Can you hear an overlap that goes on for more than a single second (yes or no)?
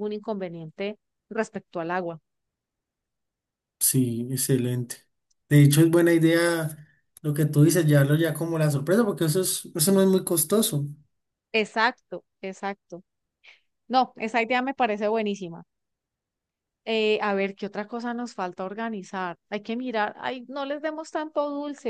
no